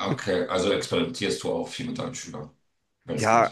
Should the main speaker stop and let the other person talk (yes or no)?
yes